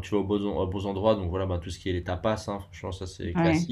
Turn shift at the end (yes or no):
no